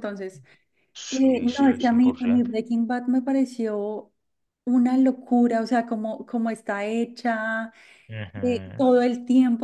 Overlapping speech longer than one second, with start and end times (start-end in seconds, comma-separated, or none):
1.1-2.5